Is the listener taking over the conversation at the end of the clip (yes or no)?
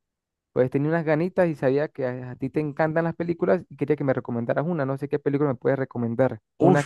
yes